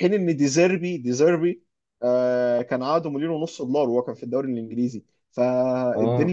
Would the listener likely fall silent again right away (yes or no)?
yes